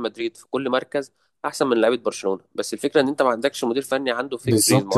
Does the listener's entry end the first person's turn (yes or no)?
yes